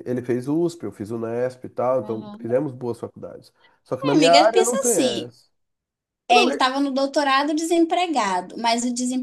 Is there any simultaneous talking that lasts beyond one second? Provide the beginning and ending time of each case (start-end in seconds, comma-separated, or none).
4.0-5.3